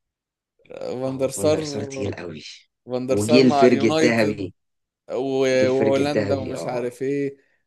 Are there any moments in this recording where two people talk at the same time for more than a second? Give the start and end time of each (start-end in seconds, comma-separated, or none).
3.1-4.5, 5.5-6.9